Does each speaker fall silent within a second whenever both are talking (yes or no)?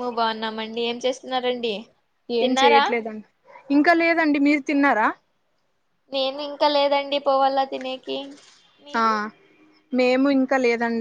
yes